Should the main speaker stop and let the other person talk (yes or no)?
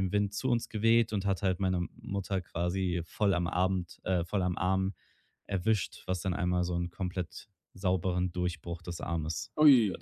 yes